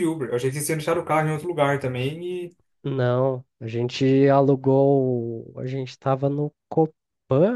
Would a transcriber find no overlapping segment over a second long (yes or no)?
yes